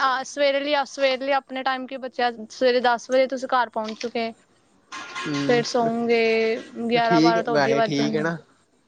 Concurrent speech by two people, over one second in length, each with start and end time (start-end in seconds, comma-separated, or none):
7.0-8.2